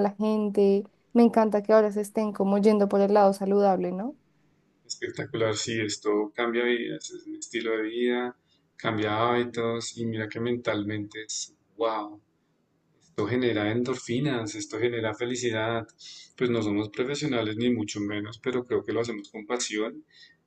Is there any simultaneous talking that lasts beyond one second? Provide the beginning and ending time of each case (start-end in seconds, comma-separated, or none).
none